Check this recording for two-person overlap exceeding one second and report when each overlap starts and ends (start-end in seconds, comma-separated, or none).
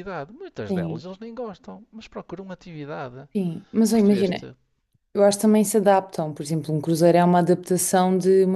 none